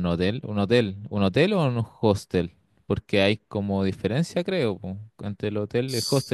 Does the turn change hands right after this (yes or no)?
no